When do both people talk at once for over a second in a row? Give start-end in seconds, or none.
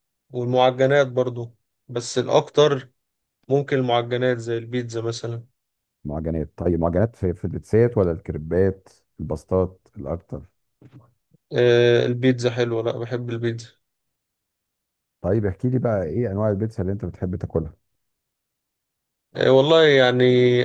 none